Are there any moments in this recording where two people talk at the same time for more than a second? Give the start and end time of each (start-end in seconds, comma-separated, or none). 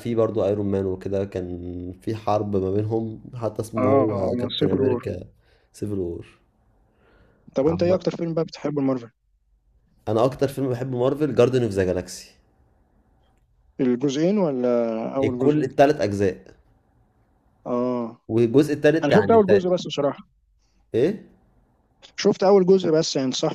3.8-5.0